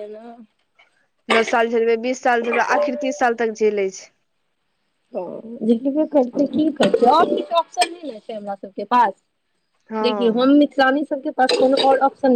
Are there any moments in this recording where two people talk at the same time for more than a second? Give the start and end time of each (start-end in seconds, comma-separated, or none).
none